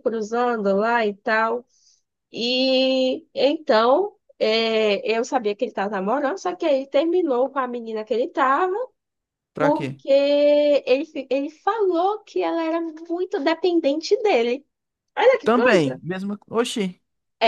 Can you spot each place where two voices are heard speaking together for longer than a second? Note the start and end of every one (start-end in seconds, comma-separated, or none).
none